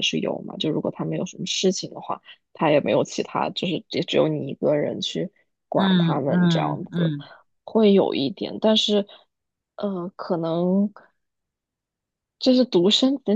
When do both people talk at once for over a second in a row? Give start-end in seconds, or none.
5.8-7.1